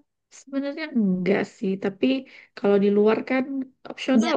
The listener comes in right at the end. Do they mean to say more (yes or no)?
no